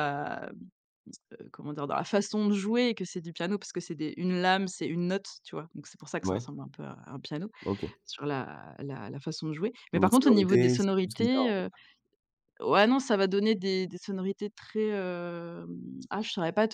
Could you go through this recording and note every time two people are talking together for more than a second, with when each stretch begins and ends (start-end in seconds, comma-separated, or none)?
9.9-11.6